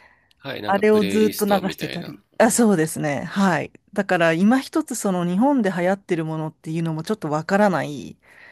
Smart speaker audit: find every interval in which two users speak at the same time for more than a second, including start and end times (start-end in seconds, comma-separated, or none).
0.7-2.6